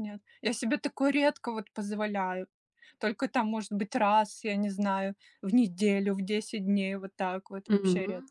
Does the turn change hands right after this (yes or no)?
yes